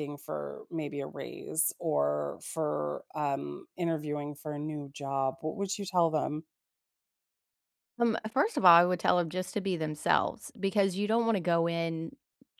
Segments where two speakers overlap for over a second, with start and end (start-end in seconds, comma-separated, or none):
none